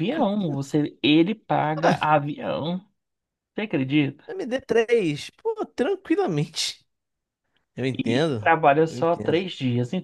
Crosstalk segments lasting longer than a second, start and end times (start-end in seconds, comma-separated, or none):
8.0-9.4